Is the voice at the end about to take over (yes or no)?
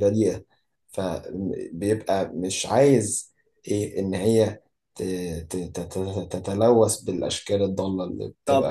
yes